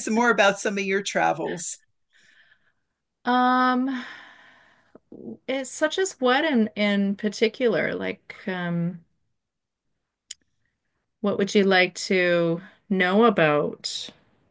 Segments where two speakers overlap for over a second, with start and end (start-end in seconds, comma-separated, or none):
none